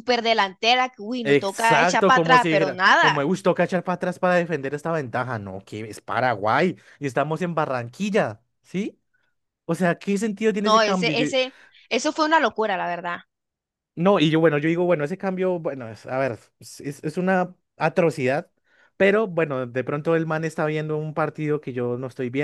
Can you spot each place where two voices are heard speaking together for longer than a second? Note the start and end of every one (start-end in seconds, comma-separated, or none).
1.2-3.3